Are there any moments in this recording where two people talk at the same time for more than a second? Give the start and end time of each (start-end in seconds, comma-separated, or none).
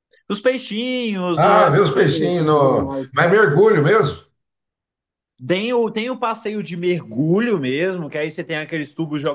1.4-3.1